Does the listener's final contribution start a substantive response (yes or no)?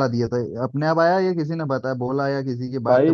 yes